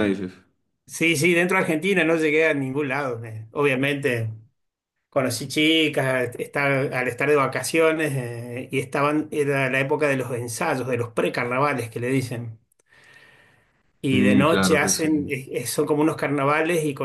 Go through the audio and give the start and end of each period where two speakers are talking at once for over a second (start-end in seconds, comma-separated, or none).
14.1-15.3